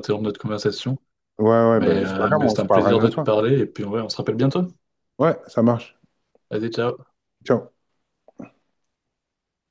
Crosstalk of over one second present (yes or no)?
yes